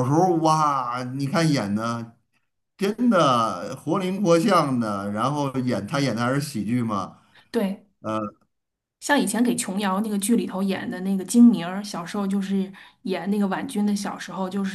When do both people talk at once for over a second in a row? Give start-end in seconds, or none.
none